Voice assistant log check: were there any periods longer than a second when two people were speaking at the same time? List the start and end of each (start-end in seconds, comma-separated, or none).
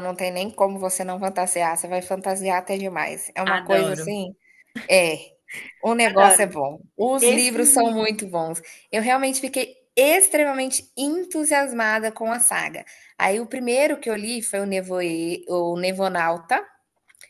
none